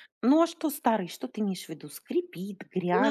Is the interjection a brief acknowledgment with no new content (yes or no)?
no